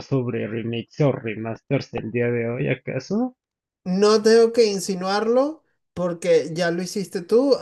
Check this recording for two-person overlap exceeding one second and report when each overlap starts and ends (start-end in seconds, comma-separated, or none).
none